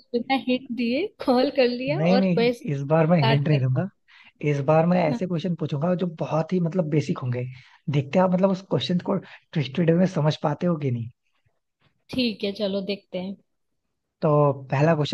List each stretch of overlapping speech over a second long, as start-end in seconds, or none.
2.0-3.6